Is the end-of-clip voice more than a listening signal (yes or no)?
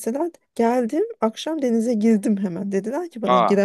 no